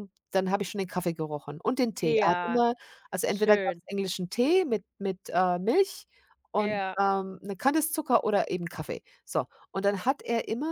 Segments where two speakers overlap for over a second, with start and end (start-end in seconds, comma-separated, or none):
none